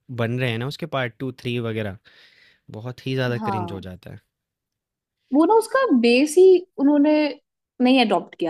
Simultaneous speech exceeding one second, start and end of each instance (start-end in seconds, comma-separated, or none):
none